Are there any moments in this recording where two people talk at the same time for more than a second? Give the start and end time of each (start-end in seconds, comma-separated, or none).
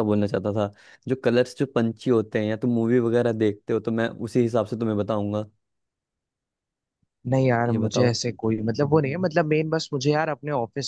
none